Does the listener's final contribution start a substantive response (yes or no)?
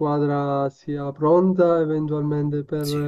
yes